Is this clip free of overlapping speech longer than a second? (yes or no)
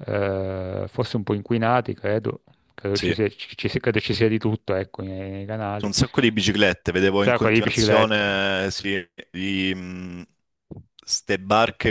no